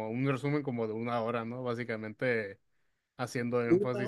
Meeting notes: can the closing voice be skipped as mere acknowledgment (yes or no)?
yes